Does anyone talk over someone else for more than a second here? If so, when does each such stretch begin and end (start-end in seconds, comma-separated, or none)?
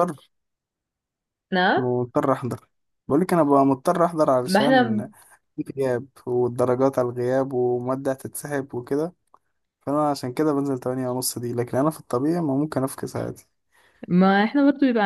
none